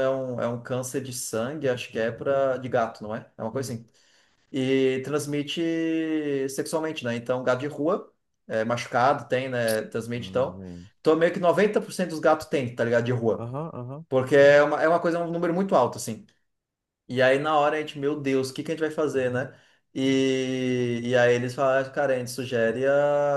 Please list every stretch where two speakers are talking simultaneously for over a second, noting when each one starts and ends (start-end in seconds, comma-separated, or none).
none